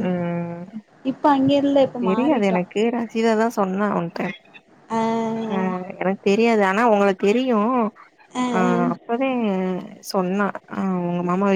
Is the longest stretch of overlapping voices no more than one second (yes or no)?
yes